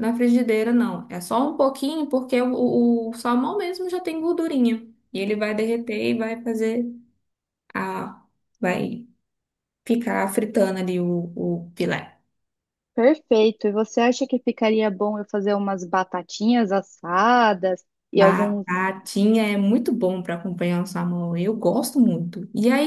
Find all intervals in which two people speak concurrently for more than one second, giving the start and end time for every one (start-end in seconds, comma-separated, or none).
none